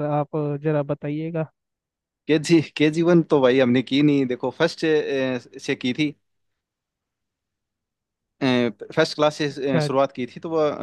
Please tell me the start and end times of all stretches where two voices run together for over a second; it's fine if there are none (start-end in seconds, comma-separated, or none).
none